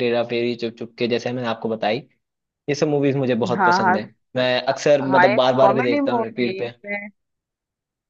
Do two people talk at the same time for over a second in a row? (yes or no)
yes